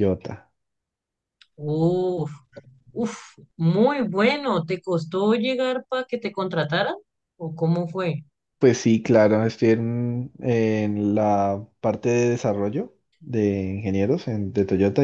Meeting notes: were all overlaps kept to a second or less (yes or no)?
yes